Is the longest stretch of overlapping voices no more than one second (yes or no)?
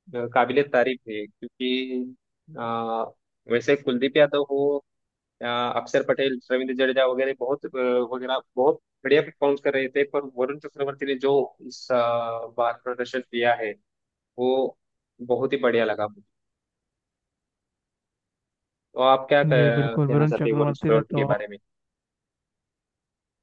no